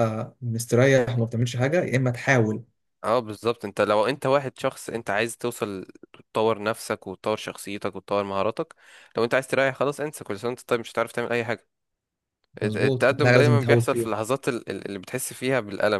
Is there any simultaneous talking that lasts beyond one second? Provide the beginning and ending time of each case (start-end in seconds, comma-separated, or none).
12.6-14.1